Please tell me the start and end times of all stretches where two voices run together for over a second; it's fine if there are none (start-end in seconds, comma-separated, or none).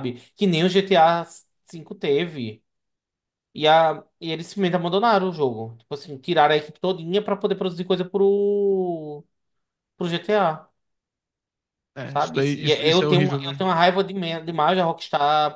12.1-13.7